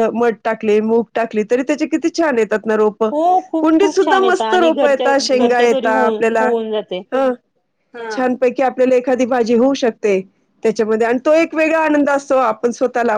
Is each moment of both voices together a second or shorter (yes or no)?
no